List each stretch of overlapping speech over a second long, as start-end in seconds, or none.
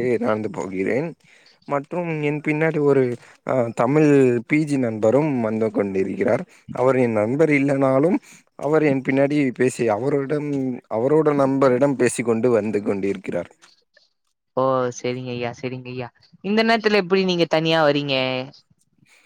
none